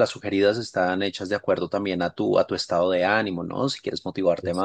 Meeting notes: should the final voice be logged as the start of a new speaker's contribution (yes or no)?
no